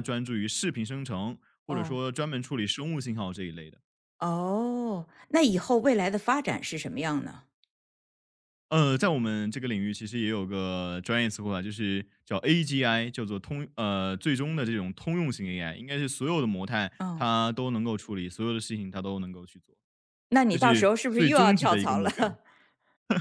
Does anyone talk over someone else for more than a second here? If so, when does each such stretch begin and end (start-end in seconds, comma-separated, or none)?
20.5-22.3